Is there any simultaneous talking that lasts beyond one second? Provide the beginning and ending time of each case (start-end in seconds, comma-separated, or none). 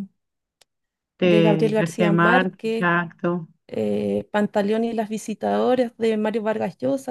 1.2-2.9